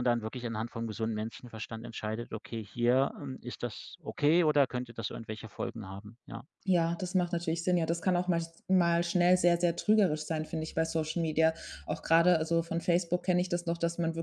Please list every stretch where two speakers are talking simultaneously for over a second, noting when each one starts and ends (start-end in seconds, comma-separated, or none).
none